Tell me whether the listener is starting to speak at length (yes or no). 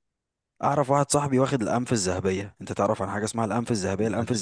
no